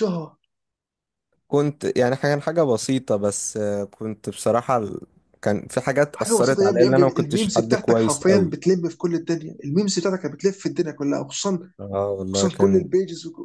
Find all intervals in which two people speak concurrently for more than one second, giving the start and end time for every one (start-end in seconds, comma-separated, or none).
6.1-8.5